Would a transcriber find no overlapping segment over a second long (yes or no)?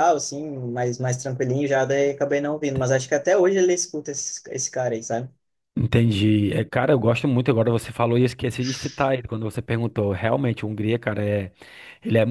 yes